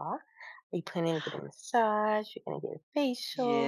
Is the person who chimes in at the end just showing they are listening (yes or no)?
no